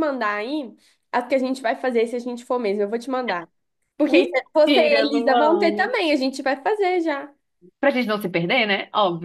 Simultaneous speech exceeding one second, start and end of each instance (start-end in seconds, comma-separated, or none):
4.0-5.9